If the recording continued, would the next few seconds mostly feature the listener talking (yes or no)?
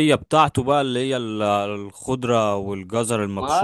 yes